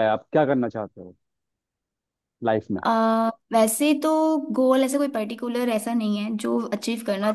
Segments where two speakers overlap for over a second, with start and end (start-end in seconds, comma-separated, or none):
none